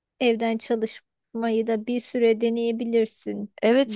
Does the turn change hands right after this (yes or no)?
yes